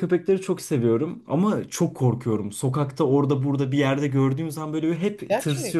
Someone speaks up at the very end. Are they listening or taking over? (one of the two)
listening